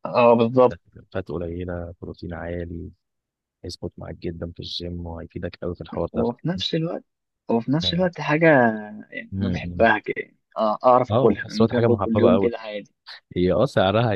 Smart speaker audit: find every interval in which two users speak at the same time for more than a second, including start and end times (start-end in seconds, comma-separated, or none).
11.1-12.5